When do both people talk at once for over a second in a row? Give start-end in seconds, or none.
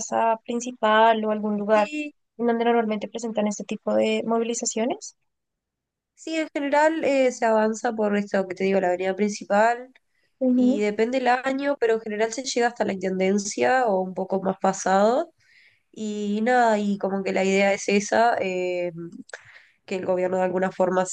none